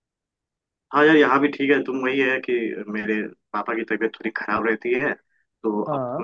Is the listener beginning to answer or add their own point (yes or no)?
no